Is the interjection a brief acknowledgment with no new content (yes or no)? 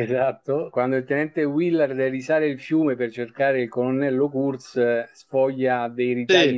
yes